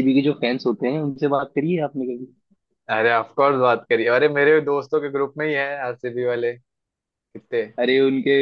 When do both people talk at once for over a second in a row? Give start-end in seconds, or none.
none